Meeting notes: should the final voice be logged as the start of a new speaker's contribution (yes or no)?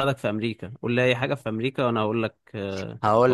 yes